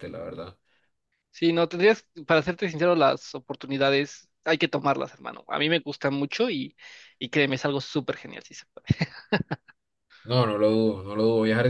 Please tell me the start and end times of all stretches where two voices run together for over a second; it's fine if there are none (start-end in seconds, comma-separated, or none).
none